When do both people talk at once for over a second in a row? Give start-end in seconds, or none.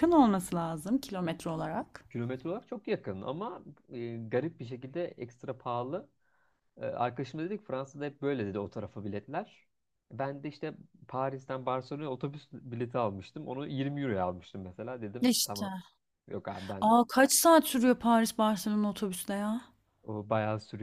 none